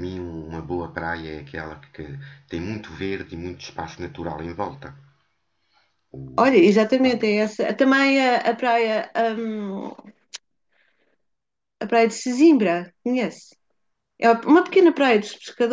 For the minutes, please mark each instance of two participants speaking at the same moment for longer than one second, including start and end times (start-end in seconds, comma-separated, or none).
none